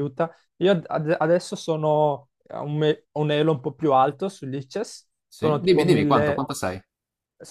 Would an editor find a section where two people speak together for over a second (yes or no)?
yes